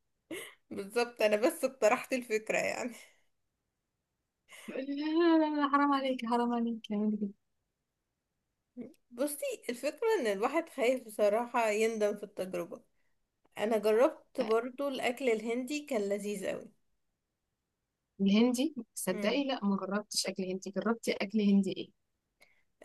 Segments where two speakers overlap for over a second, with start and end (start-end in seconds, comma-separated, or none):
none